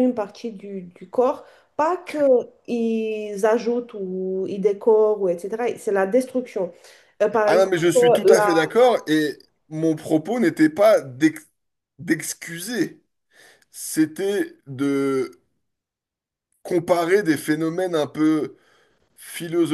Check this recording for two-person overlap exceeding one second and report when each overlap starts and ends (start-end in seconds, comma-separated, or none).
none